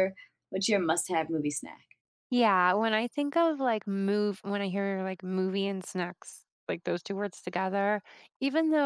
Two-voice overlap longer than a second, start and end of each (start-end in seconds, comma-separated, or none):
none